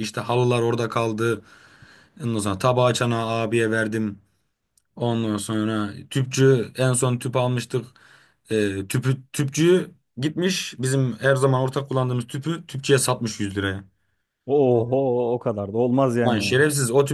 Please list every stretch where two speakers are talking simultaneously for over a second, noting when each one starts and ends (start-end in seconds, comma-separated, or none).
none